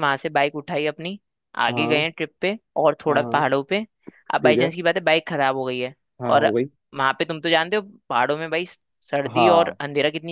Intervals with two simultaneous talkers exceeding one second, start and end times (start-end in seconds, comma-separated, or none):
none